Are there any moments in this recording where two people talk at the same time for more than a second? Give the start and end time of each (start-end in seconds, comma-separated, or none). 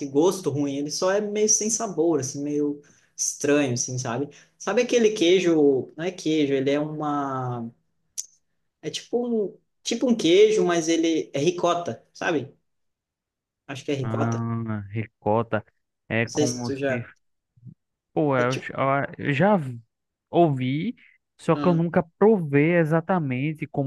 none